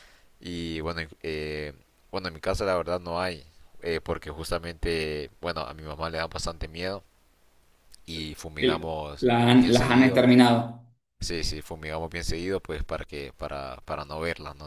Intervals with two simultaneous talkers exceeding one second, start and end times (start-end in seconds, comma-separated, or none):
8.6-10.3